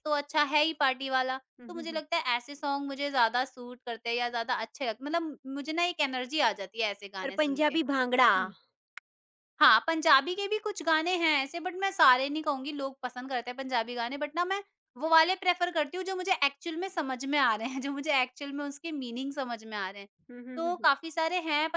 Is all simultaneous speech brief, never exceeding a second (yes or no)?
yes